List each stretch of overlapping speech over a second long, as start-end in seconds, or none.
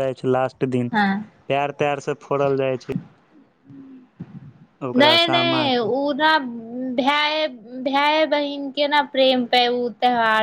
none